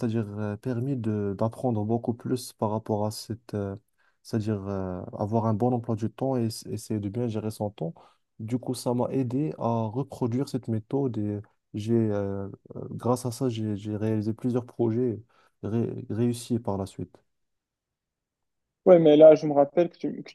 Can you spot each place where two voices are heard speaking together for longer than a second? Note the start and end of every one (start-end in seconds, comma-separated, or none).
none